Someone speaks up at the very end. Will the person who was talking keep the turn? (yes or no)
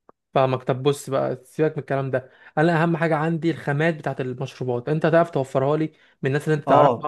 no